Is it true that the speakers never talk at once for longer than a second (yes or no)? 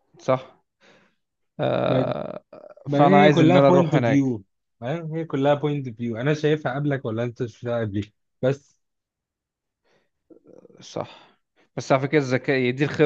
no